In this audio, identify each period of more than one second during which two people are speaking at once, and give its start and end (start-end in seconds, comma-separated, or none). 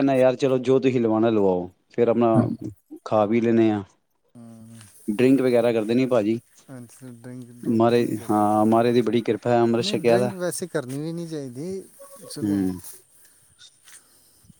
7.8-10.3